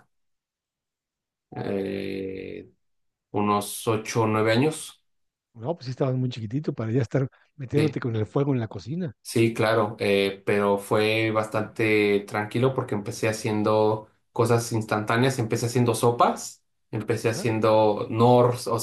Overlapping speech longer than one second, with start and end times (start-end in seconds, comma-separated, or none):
none